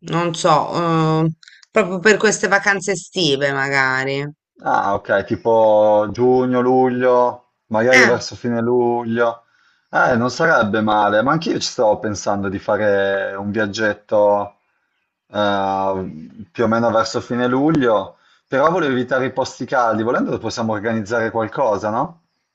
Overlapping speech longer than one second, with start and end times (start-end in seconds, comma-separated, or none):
none